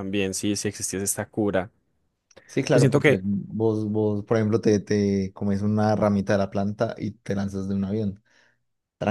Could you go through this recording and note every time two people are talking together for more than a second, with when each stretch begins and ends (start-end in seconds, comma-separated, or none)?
none